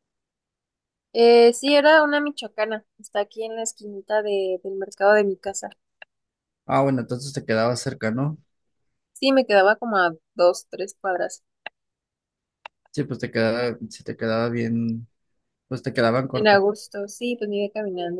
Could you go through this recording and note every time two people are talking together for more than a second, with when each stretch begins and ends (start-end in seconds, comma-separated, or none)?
none